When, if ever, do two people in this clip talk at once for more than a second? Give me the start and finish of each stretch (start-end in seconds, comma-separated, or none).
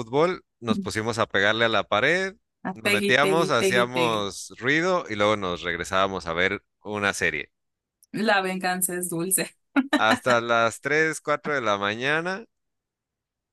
2.7-4.3